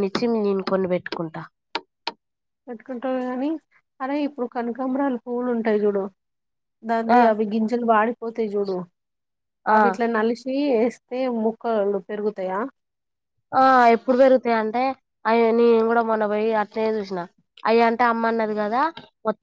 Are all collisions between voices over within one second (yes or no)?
yes